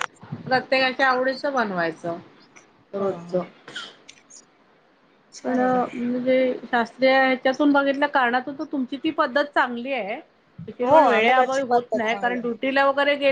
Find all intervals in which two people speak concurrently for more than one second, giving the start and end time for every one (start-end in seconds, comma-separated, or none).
10.9-12.5